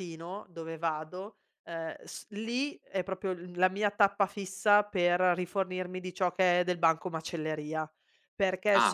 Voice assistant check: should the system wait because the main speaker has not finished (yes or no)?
yes